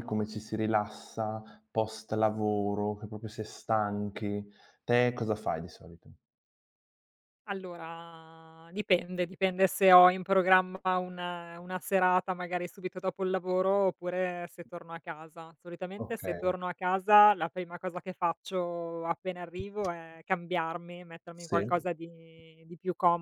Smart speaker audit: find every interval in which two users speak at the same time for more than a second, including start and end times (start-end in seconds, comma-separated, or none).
none